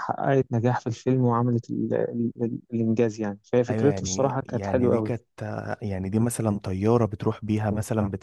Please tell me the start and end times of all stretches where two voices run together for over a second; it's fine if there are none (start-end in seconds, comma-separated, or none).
3.7-5.1